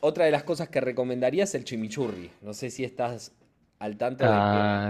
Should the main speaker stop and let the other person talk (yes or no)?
yes